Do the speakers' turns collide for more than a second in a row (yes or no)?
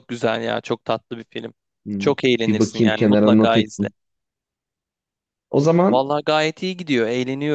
yes